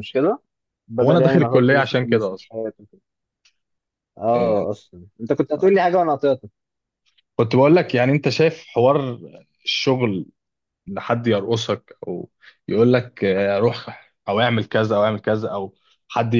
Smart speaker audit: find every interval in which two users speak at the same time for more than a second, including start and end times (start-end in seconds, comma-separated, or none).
1.0-2.5